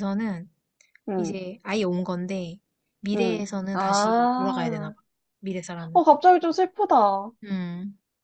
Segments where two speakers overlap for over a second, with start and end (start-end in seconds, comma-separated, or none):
3.1-4.9